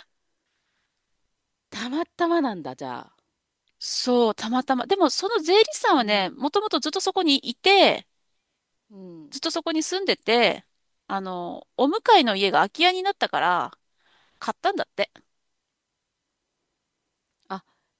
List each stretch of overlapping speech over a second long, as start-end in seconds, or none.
none